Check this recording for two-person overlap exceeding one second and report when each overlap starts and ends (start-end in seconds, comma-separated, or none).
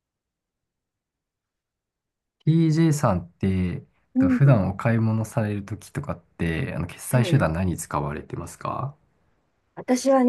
none